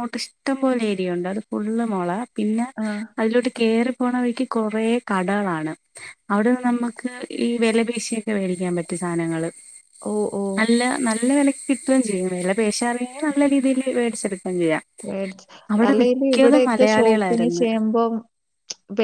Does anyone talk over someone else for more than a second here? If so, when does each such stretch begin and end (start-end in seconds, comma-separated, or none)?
15.7-17.6